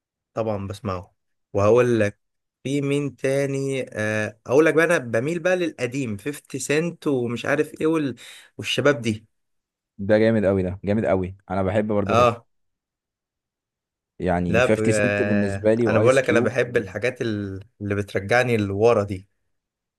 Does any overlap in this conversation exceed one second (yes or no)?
yes